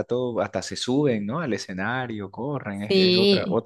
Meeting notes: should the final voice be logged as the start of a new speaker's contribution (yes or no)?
yes